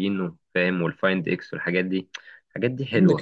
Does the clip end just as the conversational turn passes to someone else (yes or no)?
yes